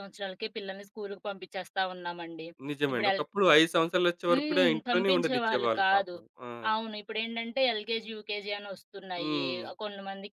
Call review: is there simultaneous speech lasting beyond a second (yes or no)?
yes